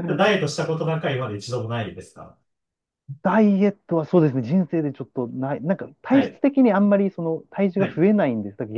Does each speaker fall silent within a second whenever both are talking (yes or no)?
yes